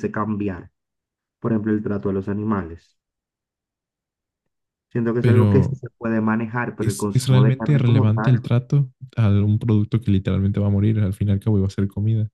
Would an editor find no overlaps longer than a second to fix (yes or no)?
no